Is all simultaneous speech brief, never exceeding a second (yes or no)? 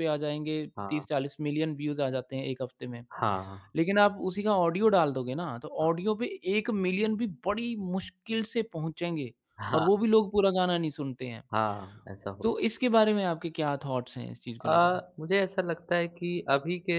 yes